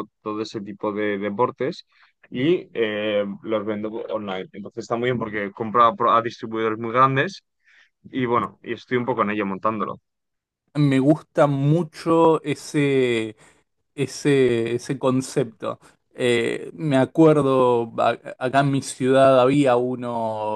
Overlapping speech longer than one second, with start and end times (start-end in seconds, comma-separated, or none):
none